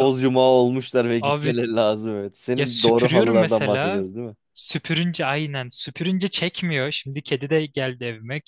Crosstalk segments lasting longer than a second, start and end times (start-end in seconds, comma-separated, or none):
2.5-4.0